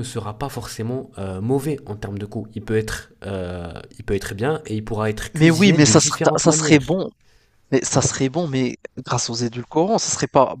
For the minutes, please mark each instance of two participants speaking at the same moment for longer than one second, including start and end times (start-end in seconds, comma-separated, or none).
5.3-6.8